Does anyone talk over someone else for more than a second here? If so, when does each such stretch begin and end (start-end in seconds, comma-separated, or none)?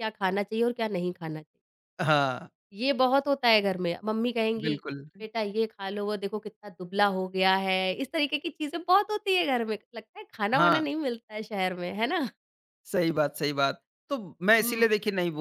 none